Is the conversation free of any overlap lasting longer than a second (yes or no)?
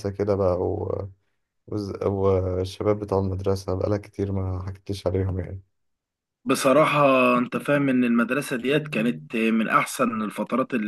yes